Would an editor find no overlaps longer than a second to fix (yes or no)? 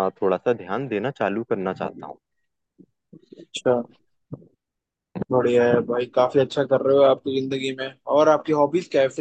yes